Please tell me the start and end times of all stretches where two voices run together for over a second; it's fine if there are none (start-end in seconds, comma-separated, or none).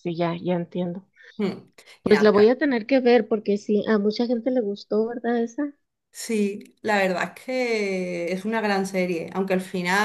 none